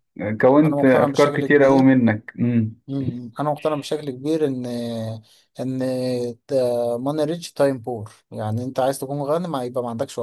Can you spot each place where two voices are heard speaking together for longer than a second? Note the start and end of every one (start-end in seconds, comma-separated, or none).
0.6-1.9